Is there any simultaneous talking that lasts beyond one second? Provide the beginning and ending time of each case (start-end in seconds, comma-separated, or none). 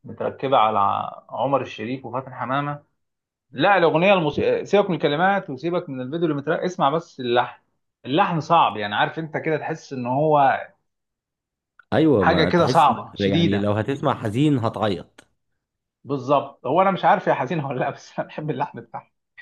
12.2-13.7